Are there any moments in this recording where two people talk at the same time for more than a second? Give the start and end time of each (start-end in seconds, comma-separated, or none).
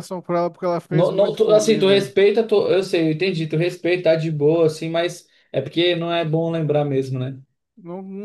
0.9-2.1